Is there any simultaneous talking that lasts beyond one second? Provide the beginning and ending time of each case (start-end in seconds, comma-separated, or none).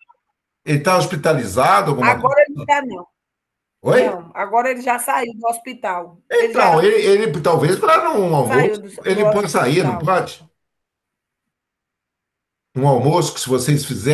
8.5-10.0